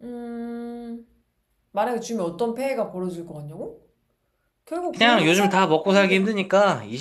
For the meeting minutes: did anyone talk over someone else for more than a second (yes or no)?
yes